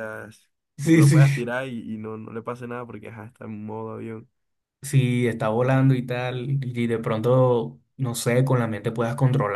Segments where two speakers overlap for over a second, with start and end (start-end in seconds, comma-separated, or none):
none